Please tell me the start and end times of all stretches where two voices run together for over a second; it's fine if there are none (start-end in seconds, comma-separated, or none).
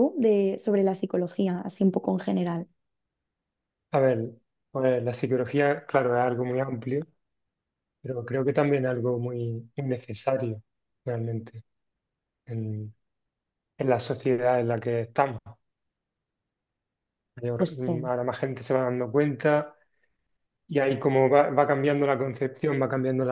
none